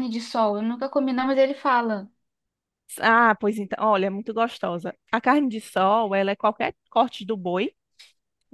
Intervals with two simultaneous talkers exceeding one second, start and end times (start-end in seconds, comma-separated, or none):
none